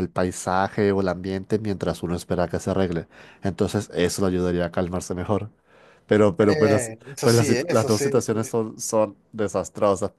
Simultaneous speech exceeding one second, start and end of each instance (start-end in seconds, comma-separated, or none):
6.5-8.1